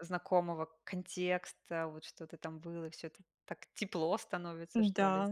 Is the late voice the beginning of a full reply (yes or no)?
yes